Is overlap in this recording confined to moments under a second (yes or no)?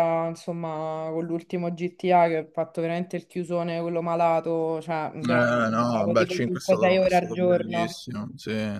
no